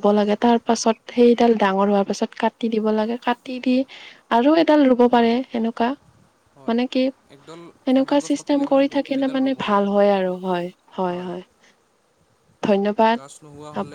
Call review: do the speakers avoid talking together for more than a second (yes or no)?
no